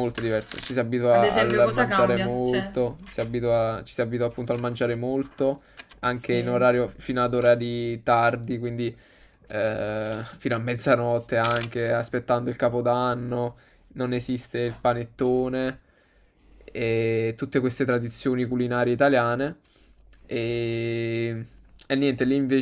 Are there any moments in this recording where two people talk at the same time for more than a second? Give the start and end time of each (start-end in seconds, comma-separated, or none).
1.1-2.7